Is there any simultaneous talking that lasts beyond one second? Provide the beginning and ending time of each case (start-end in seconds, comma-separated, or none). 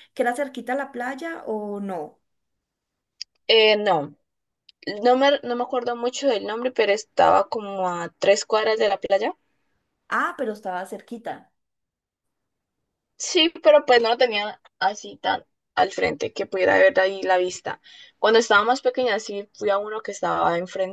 none